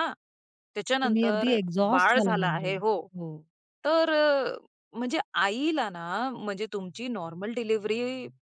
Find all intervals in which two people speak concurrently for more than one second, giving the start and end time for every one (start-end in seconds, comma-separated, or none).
1.0-2.7